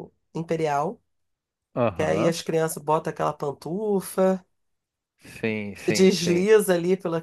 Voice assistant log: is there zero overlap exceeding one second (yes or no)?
yes